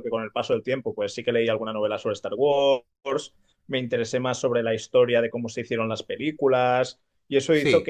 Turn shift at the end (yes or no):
no